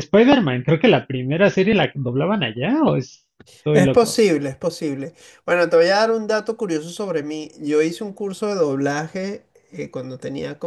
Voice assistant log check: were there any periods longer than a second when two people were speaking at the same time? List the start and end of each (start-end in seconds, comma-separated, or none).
none